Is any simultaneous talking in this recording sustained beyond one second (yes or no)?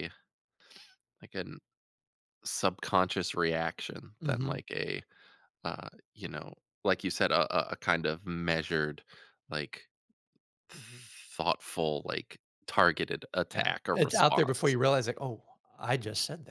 yes